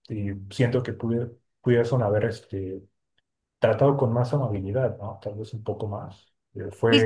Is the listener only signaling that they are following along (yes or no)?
no